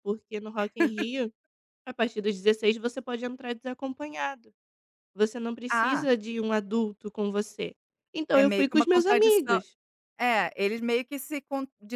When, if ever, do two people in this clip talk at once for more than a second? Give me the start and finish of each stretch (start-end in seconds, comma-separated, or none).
8.3-9.6